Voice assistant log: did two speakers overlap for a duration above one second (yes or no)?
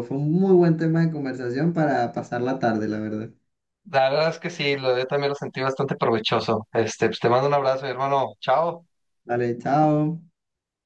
no